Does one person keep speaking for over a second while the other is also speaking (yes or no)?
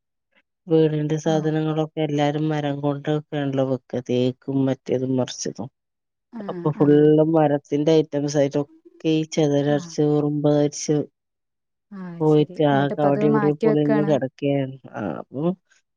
yes